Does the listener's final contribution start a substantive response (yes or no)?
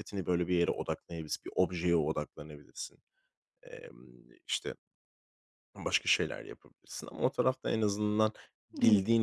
no